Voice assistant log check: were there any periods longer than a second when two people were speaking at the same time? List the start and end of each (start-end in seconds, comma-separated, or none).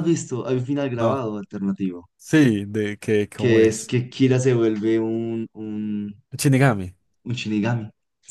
none